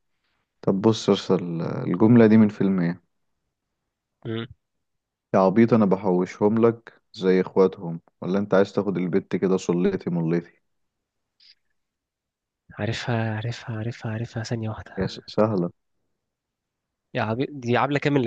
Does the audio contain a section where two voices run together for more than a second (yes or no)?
no